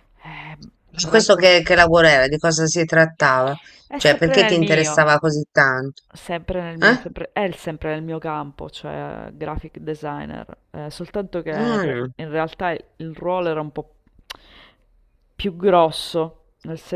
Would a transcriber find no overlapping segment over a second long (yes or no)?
no